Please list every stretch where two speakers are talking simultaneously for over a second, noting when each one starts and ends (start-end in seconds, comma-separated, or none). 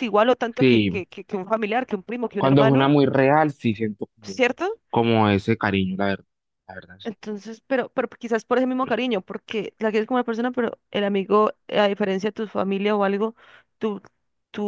none